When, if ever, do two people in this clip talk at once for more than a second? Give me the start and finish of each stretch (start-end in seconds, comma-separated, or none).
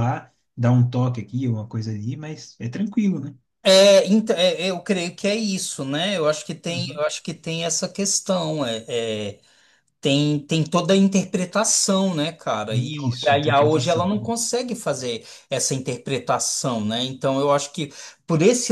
12.7-14.3